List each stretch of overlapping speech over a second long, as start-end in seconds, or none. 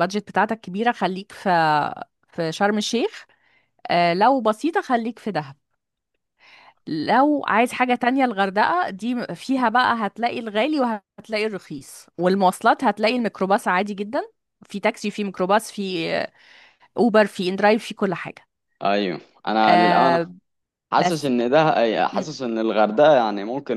none